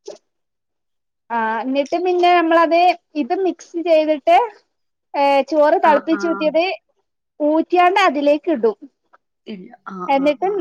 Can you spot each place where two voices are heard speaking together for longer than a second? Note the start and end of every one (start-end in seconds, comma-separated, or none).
none